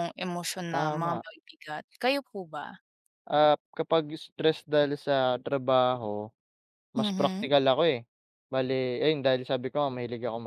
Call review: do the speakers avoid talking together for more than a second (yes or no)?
yes